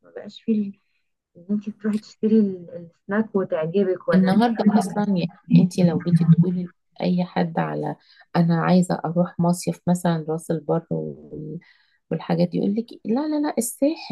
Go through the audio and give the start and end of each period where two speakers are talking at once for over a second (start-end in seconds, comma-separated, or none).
none